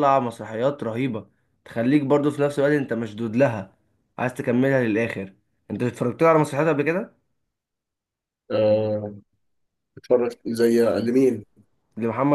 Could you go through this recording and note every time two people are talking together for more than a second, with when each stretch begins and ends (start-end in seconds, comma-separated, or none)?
none